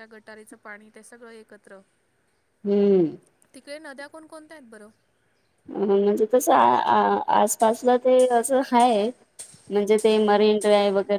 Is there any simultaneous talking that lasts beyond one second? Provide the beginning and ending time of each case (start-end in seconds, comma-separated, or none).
none